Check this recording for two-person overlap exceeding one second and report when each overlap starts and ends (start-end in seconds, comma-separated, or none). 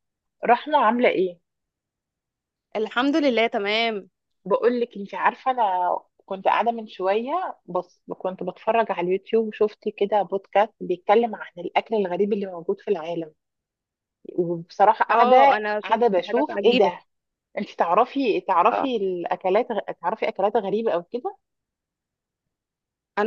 15.1-16.9